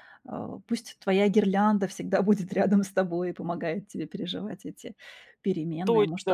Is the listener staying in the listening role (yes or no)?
no